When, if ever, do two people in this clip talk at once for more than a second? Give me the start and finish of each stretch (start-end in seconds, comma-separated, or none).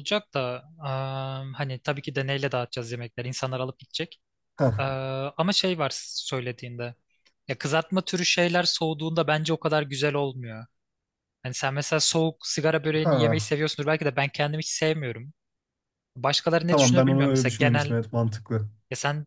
16.7-17.9